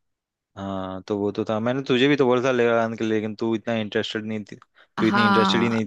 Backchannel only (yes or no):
no